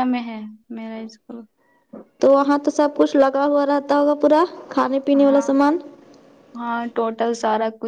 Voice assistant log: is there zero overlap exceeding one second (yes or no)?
yes